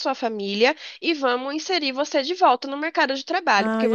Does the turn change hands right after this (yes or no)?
yes